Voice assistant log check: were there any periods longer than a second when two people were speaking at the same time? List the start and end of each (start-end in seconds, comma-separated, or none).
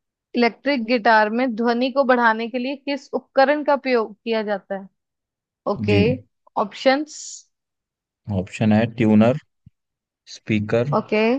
none